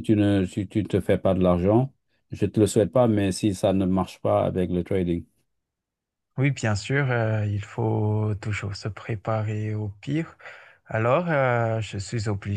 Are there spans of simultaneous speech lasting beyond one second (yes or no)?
no